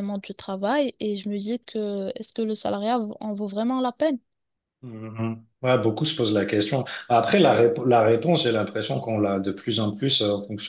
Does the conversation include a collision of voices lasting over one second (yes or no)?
no